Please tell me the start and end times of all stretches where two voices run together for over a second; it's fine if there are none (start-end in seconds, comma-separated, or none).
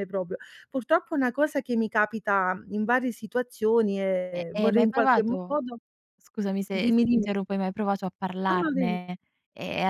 4.3-5.6